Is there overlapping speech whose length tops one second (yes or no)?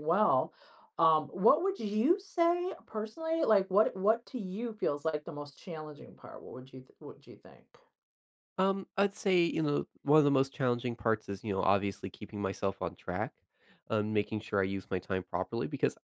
no